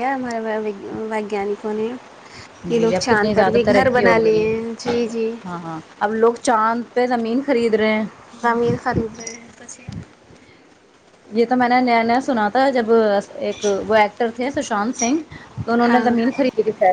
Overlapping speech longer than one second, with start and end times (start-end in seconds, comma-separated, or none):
2.8-4.5